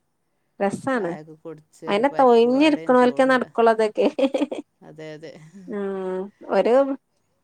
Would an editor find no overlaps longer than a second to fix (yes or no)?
no